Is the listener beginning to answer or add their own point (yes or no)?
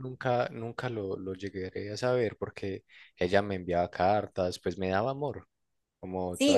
yes